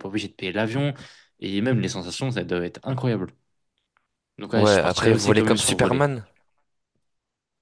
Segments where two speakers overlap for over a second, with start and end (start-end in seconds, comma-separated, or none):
4.5-6.1